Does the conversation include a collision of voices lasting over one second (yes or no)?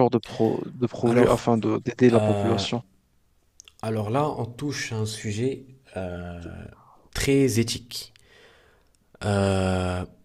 no